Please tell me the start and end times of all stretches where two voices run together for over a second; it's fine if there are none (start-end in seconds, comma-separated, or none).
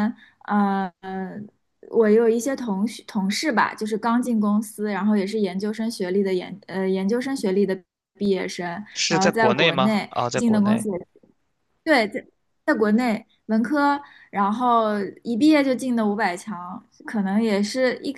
9.0-10.8